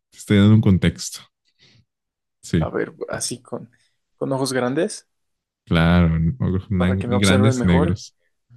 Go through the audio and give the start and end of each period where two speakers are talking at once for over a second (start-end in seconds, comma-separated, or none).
6.8-8.0